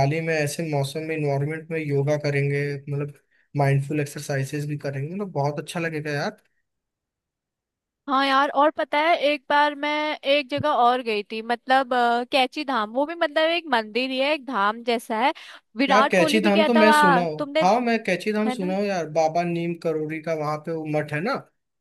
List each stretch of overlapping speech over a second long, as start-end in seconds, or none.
15.9-17.6